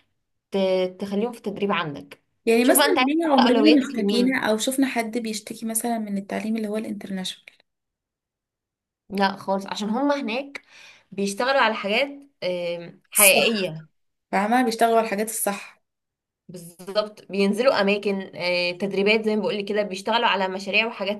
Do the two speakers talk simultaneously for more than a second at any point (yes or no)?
yes